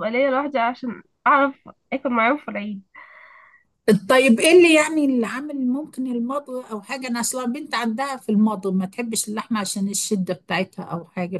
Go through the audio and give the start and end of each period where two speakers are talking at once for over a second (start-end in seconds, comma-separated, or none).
none